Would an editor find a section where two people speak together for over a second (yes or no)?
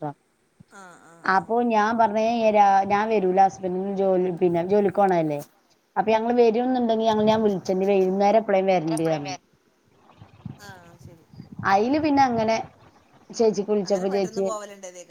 no